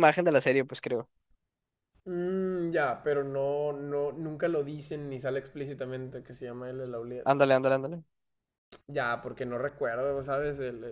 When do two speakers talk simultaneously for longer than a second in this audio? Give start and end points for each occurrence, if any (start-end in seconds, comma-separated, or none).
none